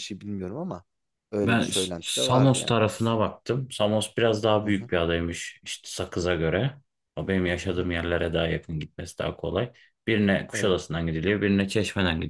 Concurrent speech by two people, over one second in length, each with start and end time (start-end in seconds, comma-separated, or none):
1.4-2.7